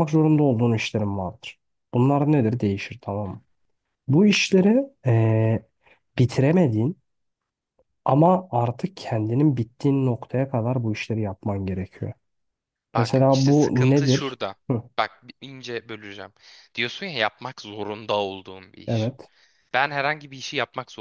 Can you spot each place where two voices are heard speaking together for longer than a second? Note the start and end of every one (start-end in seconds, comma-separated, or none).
13.0-14.6